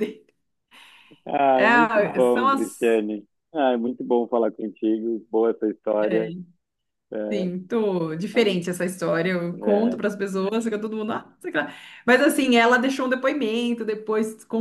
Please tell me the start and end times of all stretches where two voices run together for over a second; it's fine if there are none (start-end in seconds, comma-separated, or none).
1.6-2.9